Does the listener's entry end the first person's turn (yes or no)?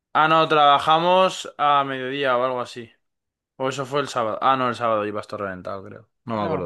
yes